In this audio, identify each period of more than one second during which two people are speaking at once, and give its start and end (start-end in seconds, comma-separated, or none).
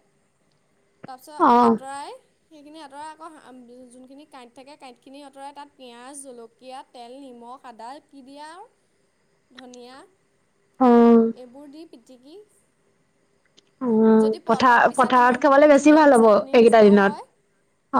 14.2-17.1